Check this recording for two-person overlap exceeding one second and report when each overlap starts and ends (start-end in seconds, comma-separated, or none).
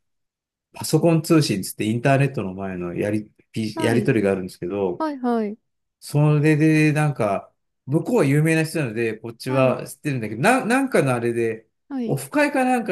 none